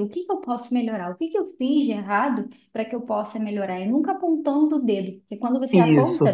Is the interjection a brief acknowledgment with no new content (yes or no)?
yes